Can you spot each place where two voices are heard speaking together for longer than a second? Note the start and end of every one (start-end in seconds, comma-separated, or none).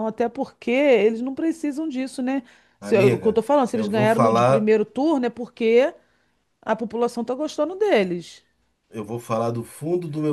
2.8-4.7